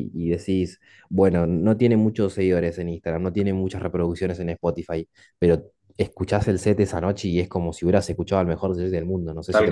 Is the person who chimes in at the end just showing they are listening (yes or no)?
no